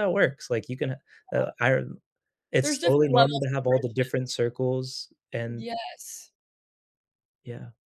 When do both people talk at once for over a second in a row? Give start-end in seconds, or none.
2.6-4.4